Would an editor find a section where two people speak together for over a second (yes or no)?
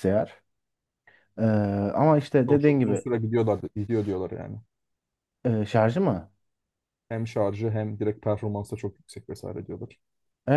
no